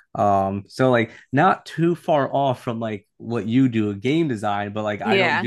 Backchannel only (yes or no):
yes